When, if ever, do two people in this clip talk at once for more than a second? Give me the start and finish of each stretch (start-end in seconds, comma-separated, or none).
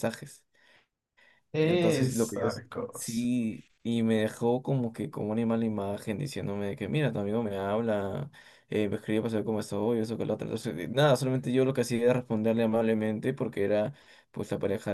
1.6-3.3